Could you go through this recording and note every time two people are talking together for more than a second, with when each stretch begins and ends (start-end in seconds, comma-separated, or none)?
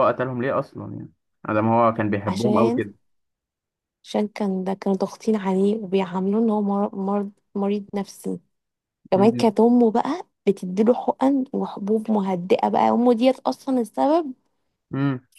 none